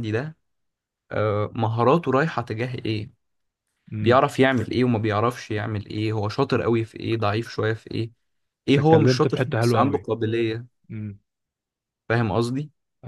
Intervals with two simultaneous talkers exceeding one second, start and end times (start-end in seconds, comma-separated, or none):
8.8-10.1